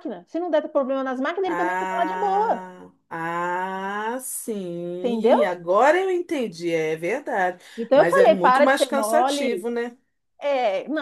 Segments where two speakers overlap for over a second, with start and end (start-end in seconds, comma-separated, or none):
1.4-2.6, 7.8-9.7